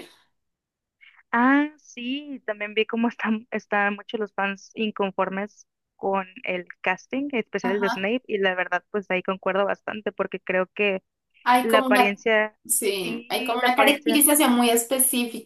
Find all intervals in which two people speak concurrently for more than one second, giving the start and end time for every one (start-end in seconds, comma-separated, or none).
13.0-14.2